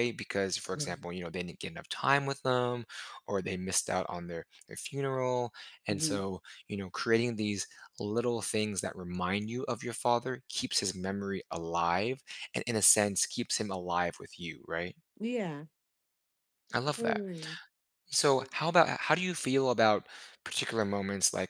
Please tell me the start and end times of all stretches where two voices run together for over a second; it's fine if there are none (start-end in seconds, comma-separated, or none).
none